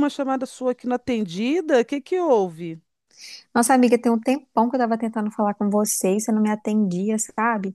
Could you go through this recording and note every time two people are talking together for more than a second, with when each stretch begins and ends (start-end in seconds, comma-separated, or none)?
none